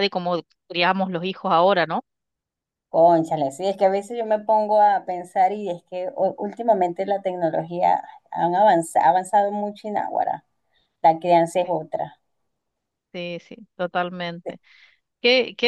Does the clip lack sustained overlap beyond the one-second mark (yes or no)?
yes